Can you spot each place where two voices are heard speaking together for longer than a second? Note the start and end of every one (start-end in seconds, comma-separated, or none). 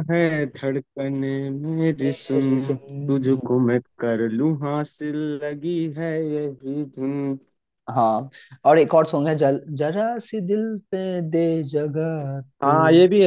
2.0-3.5